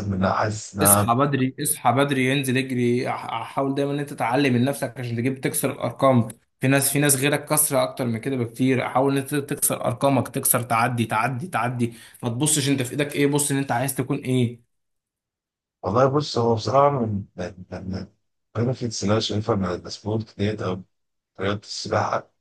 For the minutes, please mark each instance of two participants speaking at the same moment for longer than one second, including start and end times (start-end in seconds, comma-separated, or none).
none